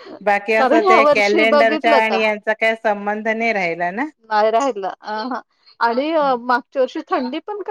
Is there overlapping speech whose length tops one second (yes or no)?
yes